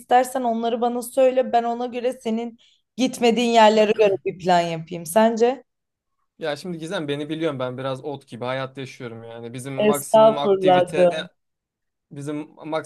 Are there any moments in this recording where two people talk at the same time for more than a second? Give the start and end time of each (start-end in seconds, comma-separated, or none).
9.8-11.1